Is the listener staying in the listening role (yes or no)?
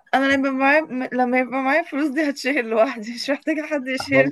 no